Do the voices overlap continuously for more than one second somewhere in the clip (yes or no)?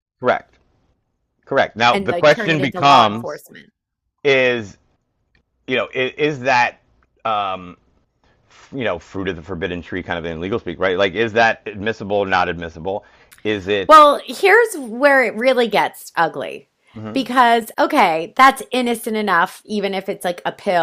yes